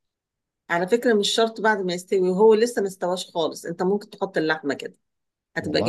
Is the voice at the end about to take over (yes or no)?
no